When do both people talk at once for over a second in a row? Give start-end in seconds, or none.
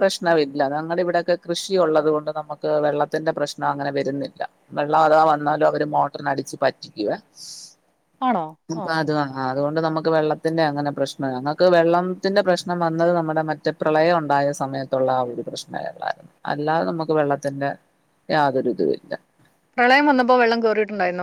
none